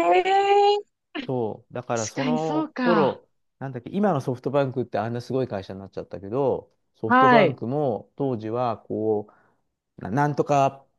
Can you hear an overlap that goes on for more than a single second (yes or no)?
yes